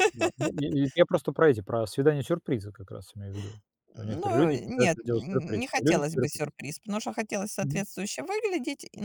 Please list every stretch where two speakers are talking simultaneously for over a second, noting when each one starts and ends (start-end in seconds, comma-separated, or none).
3.9-6.4